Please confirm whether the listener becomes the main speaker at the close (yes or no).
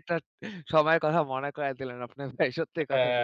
yes